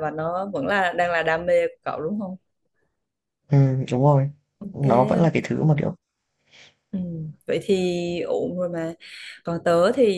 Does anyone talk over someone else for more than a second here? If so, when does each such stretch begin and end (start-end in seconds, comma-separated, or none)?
none